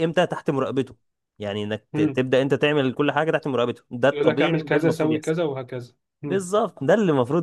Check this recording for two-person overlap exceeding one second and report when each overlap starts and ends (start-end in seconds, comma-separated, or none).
4.1-5.3